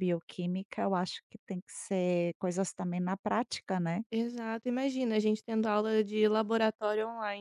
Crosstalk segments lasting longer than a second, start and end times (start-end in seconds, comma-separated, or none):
none